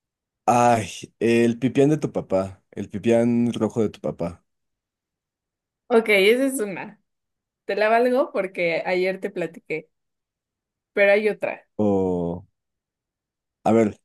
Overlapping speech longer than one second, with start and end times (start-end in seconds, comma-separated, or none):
none